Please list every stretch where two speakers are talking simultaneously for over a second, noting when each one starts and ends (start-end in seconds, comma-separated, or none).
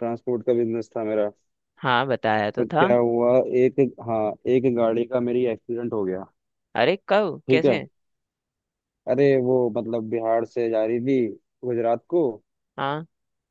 none